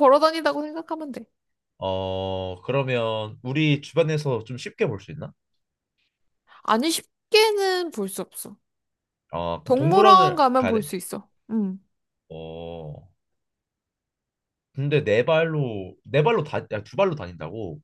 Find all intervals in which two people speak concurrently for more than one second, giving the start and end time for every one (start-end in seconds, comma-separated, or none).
9.6-10.9